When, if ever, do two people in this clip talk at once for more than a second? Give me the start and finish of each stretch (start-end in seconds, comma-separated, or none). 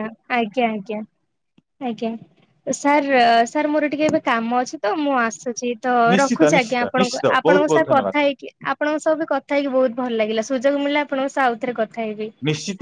6.1-8.2